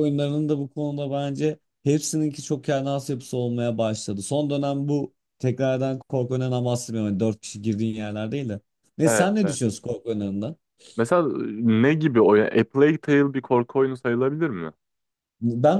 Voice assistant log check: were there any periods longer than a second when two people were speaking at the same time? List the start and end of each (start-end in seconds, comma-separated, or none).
none